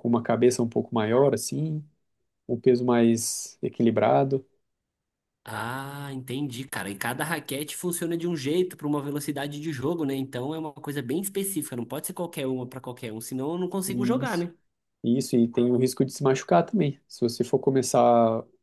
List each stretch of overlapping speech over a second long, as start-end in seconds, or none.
none